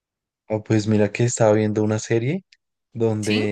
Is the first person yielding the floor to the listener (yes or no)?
no